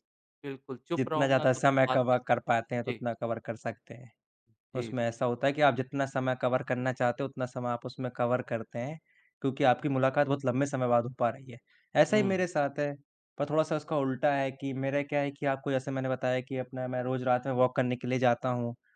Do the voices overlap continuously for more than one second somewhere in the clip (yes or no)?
yes